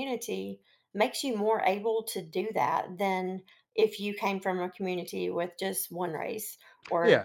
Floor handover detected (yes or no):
yes